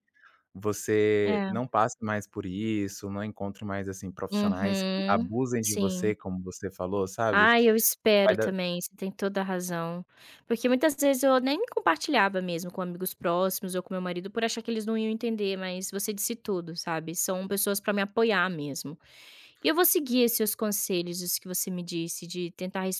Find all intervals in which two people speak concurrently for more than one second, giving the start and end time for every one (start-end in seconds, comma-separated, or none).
4.3-6.2